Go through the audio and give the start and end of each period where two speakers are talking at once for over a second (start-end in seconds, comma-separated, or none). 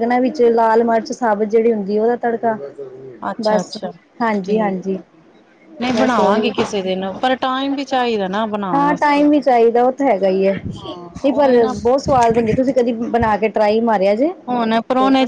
none